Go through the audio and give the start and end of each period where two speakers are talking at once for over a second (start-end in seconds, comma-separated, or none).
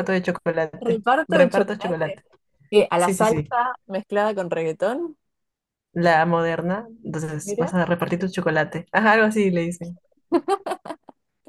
0.8-2.2